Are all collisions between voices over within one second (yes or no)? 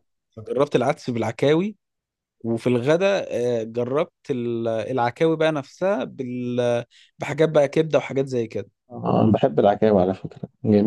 yes